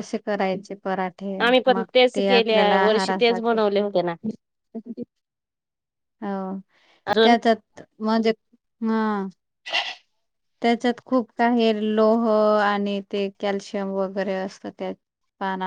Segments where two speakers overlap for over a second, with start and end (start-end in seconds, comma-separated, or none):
1.5-3.6